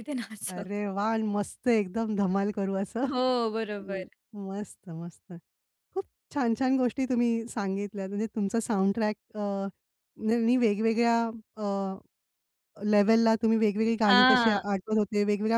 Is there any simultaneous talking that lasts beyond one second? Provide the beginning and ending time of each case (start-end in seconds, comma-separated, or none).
none